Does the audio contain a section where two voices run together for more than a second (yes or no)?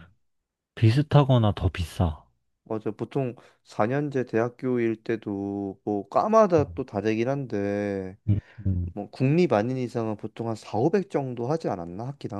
no